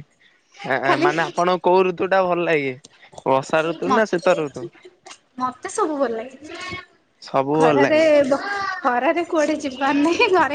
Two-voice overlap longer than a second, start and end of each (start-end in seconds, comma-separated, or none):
none